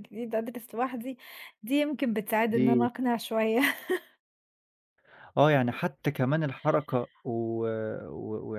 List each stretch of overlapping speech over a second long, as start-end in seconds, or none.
none